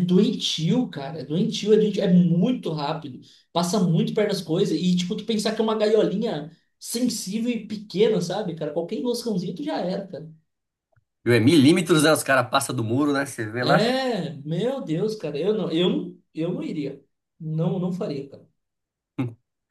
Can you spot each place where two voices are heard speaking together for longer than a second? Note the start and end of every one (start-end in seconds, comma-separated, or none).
none